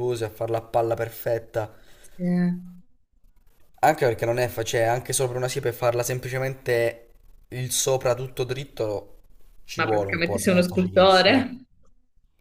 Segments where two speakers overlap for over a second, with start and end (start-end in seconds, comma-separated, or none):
9.7-11.6